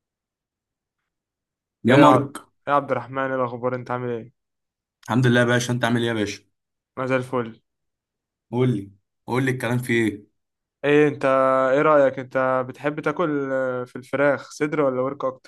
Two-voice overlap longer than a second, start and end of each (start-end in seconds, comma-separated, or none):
none